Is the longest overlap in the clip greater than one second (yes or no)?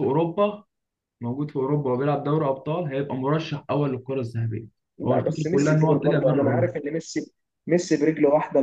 yes